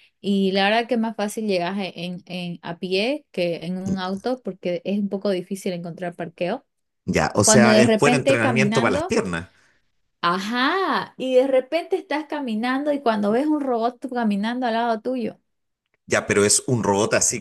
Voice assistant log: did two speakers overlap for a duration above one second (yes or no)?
yes